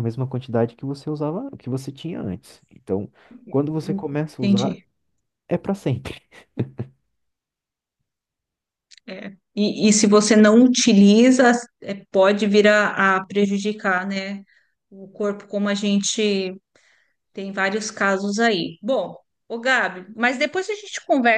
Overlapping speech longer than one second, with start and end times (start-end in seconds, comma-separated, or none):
none